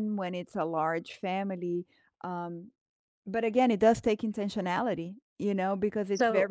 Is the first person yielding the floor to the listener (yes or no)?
no